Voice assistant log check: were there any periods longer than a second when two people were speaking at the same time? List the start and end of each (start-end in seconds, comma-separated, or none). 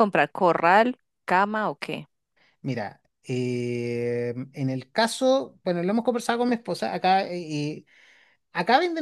none